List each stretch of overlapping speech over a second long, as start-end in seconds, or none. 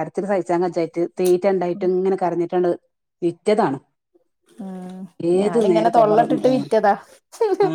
5.4-6.7